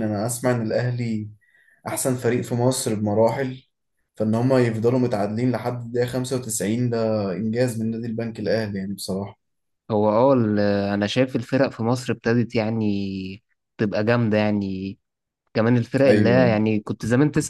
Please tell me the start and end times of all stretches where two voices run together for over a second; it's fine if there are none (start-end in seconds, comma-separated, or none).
none